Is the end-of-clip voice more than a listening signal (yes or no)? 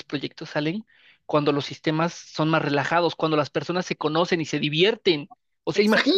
yes